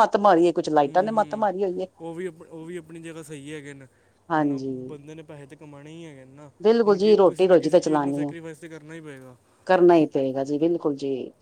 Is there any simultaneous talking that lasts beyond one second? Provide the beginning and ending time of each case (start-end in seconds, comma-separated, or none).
6.9-8.3